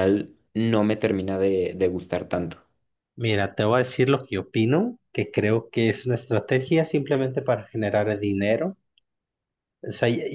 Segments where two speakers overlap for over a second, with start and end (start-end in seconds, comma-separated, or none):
none